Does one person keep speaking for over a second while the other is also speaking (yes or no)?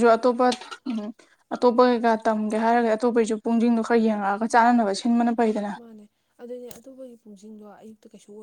no